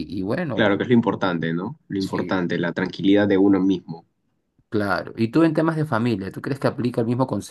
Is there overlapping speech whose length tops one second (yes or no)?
no